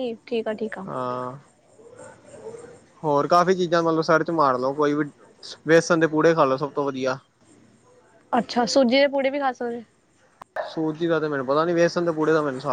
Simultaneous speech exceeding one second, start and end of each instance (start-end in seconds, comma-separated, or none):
none